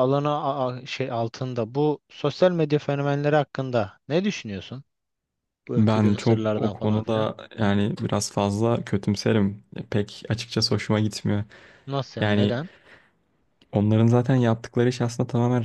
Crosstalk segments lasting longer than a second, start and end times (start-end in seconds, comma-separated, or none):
5.8-7.3